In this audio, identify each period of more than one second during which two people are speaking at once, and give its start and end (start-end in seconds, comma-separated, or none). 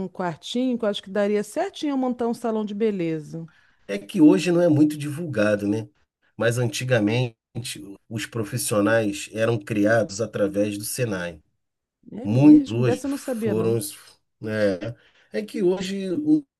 12.2-13.8